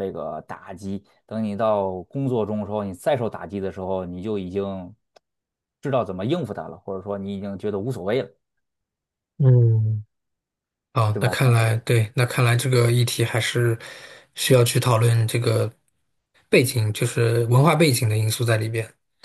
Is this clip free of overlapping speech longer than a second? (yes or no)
yes